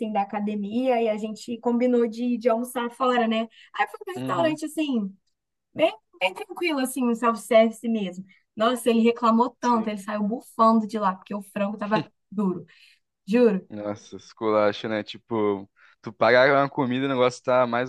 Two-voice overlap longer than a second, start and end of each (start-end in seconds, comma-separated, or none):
none